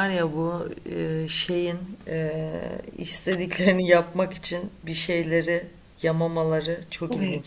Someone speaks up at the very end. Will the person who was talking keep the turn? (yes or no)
no